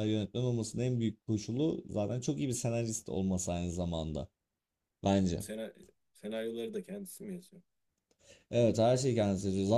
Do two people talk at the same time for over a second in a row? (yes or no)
no